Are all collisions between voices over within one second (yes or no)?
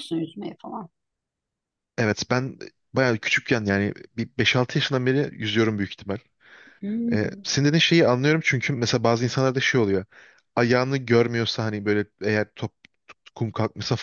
yes